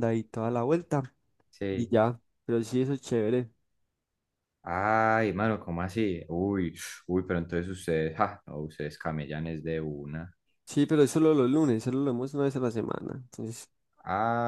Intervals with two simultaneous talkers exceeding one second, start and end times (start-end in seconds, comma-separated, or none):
none